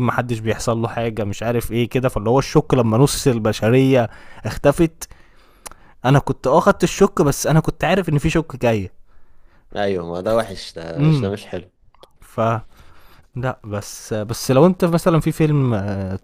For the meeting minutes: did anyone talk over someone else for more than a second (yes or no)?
no